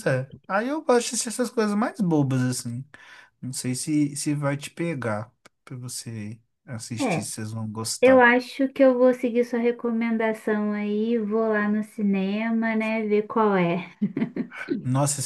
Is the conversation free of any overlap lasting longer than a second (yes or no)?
yes